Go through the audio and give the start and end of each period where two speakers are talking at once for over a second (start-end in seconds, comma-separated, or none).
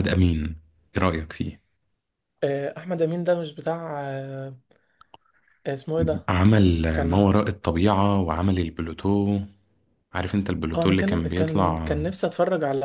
10.8-11.9